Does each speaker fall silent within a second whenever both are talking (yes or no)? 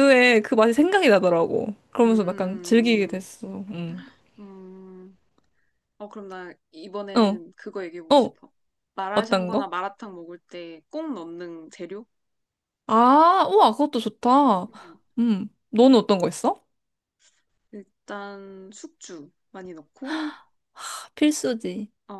no